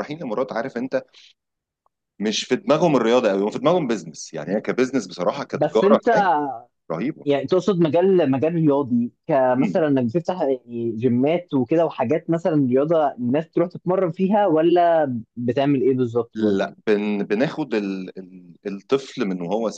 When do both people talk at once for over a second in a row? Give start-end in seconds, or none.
none